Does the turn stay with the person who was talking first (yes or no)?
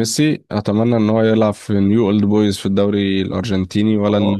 no